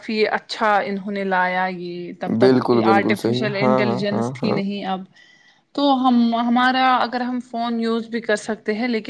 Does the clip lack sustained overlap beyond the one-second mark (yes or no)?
no